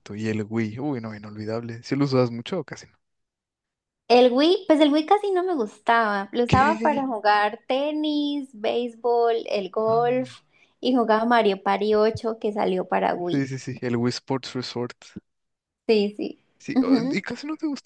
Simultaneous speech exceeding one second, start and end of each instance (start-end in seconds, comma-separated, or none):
none